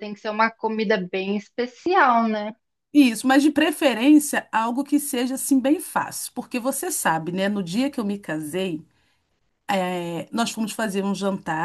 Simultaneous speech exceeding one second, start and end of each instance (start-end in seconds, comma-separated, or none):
none